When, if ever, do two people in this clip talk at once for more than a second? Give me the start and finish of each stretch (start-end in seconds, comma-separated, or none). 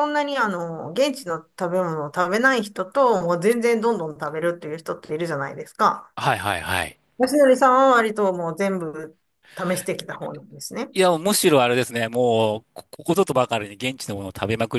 none